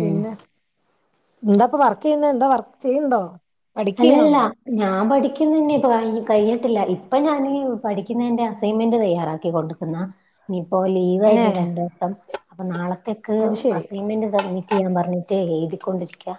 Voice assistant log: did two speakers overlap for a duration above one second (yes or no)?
no